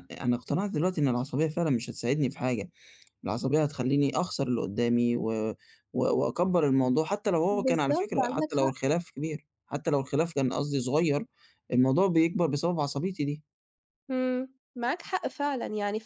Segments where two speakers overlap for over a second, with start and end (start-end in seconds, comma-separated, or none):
7.5-8.8